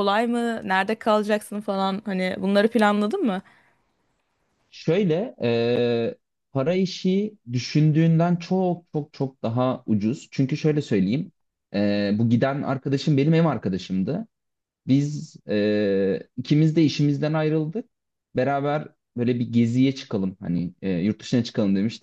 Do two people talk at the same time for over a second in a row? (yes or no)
no